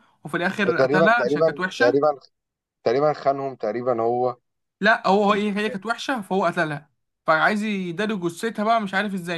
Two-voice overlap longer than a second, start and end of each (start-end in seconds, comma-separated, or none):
0.6-2.0